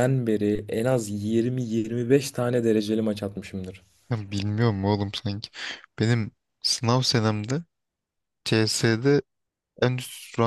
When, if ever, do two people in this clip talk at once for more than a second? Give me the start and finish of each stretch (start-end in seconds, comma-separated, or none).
none